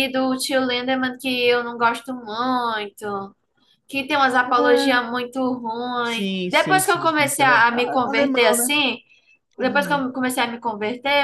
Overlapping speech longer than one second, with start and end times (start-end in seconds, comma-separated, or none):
6.0-8.7